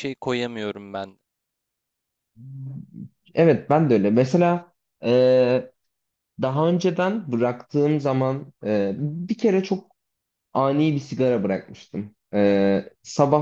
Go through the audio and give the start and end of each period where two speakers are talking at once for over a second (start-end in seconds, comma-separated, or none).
none